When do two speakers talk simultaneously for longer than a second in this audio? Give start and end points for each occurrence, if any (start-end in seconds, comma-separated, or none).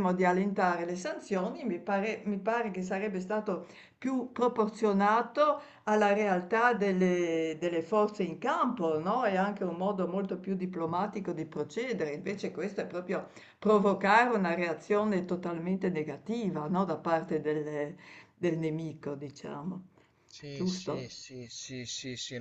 none